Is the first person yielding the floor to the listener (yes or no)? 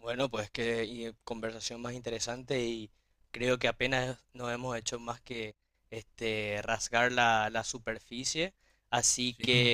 no